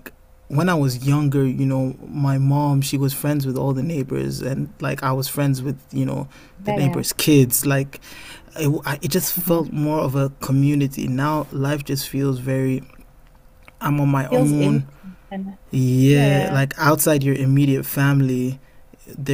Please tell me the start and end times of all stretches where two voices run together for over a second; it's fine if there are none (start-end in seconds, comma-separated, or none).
none